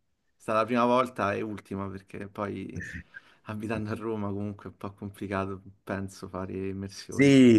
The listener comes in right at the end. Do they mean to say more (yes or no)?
yes